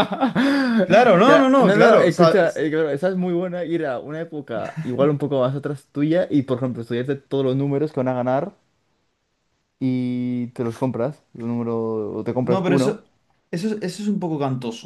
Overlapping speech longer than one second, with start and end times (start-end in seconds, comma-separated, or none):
1.2-2.6